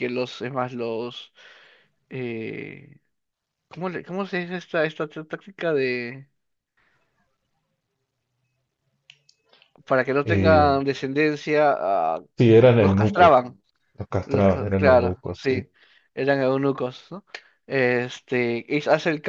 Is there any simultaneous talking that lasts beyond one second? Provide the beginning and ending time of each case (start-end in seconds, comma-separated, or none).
14.2-15.6